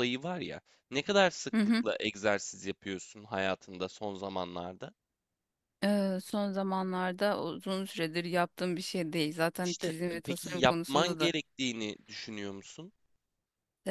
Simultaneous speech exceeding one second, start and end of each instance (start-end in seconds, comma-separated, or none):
9.6-11.3